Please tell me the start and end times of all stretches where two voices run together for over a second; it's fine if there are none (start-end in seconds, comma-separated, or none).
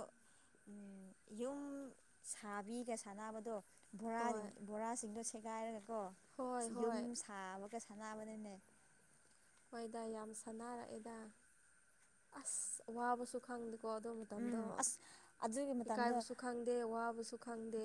none